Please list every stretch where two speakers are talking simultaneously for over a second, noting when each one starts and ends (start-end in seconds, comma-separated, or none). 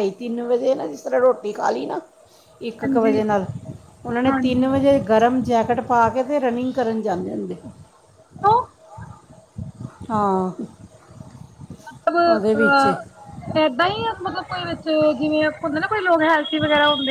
none